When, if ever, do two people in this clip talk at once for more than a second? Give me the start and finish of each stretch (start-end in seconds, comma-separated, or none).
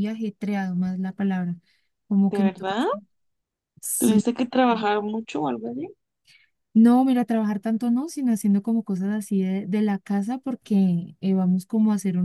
none